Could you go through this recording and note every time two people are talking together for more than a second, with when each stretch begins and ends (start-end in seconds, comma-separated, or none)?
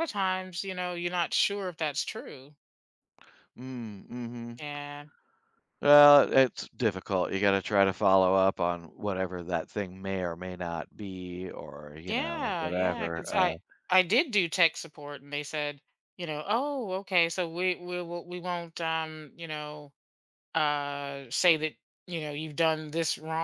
12.1-13.6